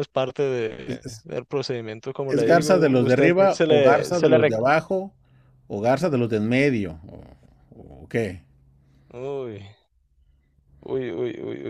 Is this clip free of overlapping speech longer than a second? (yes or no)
no